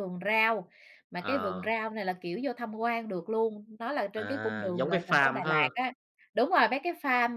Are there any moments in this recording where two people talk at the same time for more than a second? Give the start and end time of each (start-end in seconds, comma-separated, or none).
4.2-5.7